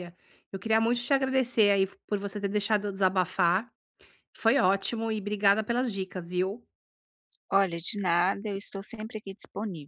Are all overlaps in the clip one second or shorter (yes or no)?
yes